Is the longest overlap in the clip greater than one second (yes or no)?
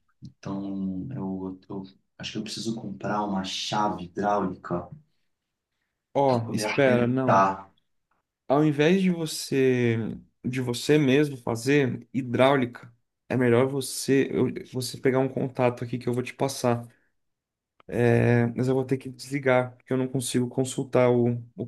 yes